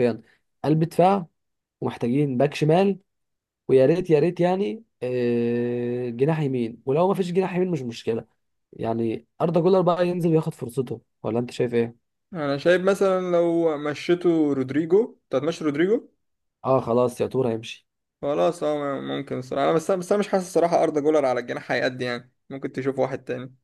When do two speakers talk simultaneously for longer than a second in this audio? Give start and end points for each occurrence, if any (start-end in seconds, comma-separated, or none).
none